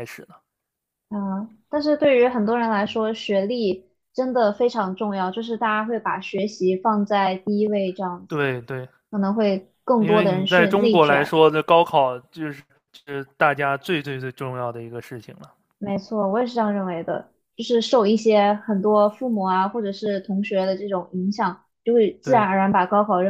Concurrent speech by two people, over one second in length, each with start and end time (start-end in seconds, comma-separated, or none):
10.0-11.4